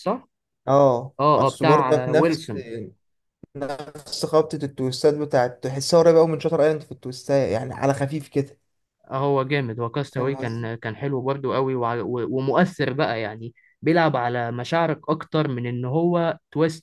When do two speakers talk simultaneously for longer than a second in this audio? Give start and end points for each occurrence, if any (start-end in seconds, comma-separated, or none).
1.2-2.4